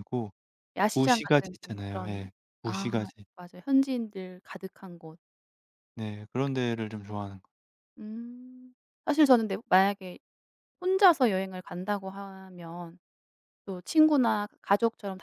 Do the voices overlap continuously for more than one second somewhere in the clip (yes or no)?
yes